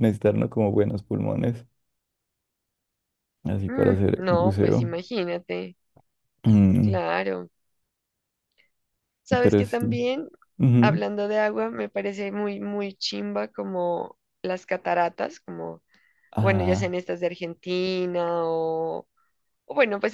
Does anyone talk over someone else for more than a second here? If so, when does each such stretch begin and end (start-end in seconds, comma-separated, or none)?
3.7-4.9